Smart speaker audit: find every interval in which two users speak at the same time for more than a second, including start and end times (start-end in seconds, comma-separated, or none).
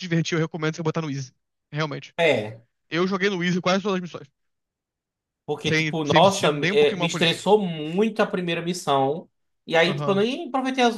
5.7-7.4